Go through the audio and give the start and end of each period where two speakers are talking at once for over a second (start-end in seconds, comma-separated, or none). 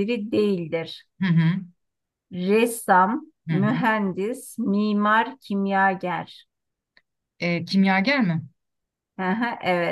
none